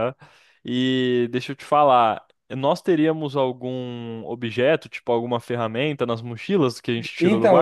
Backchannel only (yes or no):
no